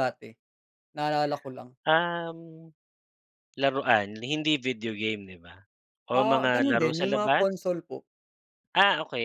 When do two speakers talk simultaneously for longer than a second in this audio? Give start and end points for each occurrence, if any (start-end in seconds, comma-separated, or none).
6.1-7.5